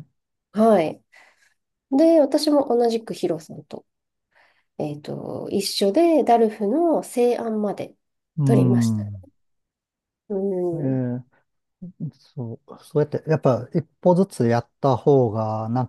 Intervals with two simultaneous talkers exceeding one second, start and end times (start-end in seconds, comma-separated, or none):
none